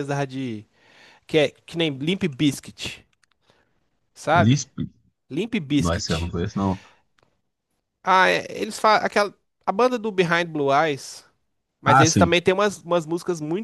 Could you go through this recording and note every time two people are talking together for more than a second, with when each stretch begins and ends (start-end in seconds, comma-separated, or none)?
none